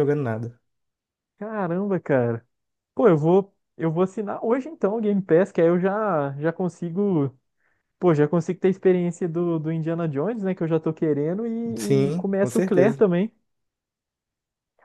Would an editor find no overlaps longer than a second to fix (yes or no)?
no